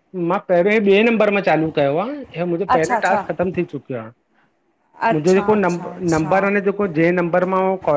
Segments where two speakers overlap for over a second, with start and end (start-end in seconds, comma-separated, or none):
5.1-6.5